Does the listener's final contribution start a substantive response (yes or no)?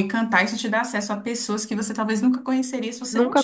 yes